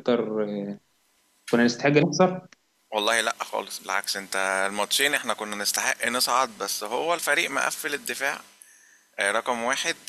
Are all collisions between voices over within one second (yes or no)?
yes